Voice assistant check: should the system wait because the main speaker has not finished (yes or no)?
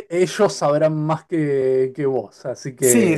no